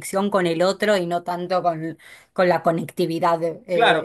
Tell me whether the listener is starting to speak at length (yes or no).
yes